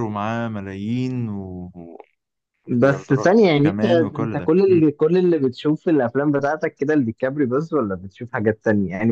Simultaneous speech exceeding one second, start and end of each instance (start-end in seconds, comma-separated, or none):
2.8-4.8